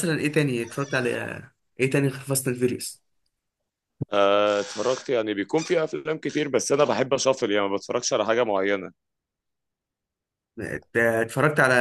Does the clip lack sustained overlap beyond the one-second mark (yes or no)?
yes